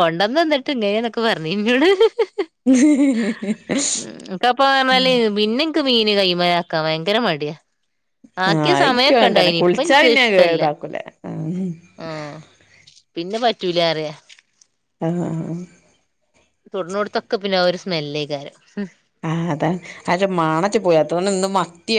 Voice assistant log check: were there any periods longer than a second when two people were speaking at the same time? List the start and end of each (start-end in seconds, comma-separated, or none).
8.5-10.6